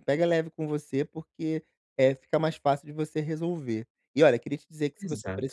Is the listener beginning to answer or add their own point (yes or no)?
no